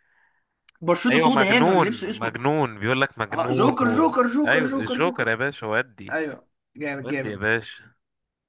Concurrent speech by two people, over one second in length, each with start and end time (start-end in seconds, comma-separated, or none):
1.1-2.5, 3.3-5.3